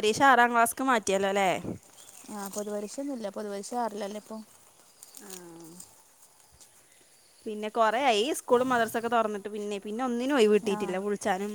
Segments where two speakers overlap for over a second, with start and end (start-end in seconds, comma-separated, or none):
none